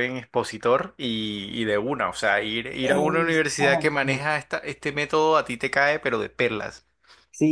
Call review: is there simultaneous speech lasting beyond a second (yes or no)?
yes